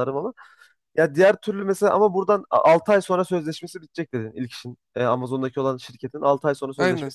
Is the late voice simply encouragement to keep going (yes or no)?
no